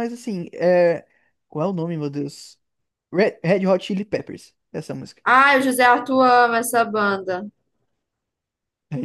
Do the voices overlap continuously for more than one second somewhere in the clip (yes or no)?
no